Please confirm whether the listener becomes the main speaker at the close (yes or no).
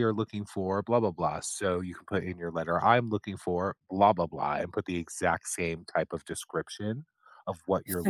yes